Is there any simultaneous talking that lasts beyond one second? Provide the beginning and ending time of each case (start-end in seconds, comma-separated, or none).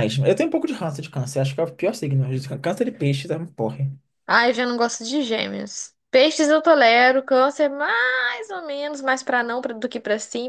none